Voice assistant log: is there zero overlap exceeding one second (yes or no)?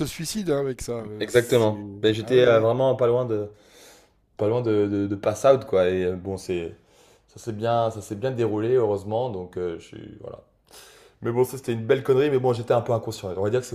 no